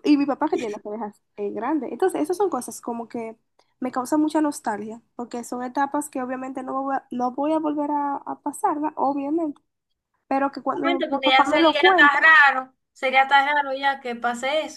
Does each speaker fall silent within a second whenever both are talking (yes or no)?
no